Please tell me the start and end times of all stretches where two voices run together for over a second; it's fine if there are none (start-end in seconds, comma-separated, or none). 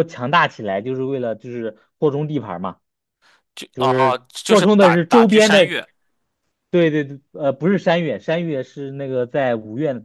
3.7-5.7